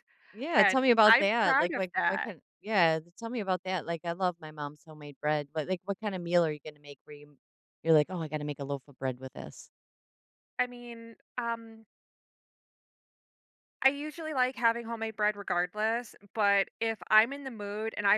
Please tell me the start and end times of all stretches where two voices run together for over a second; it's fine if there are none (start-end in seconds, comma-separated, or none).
0.6-2.3